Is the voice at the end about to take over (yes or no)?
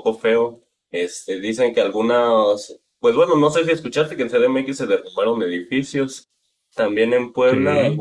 no